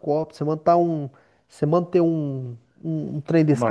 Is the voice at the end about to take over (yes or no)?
no